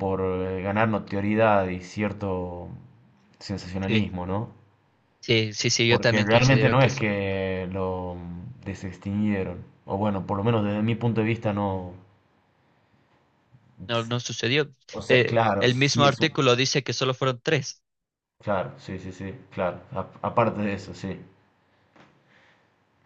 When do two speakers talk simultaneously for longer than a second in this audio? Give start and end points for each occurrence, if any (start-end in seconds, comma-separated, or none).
5.9-7.1, 14.9-16.4